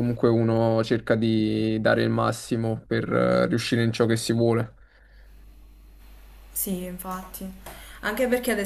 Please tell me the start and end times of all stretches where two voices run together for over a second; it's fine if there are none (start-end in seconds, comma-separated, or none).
none